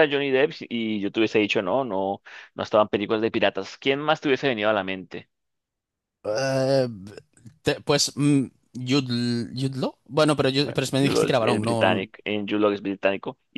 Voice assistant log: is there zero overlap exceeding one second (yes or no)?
no